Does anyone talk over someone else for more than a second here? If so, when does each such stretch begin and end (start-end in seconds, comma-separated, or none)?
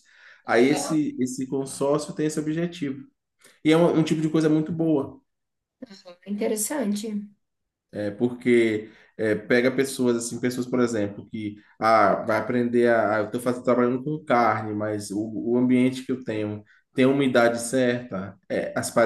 none